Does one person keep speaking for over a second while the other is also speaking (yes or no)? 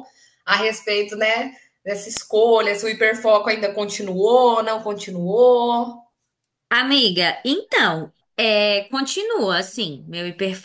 no